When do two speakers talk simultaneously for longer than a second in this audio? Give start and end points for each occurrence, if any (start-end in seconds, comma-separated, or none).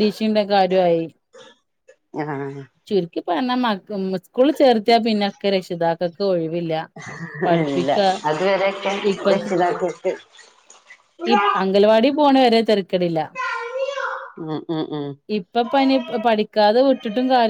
none